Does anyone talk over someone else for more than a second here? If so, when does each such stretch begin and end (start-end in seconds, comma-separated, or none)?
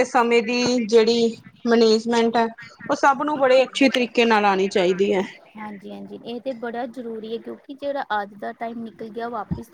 none